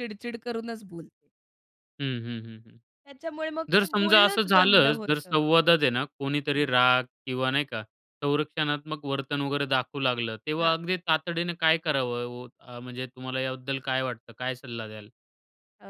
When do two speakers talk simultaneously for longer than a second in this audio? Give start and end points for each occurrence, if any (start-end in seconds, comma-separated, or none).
3.7-5.4